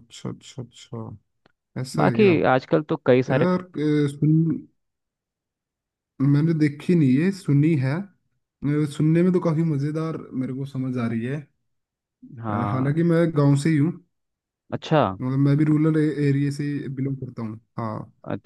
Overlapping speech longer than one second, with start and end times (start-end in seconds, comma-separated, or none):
none